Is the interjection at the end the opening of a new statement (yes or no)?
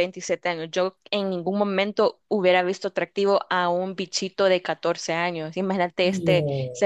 no